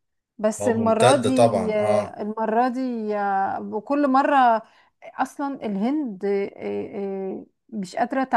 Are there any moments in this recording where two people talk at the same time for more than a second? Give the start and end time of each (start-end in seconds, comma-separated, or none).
0.6-2.2